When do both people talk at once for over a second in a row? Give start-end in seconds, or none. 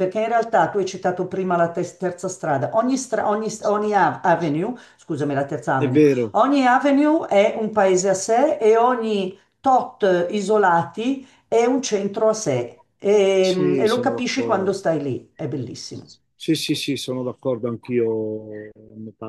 13.4-14.8